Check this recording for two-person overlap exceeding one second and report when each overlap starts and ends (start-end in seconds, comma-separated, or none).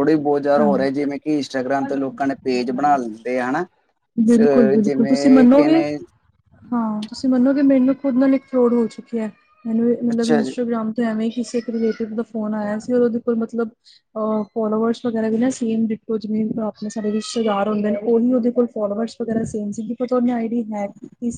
4.4-5.8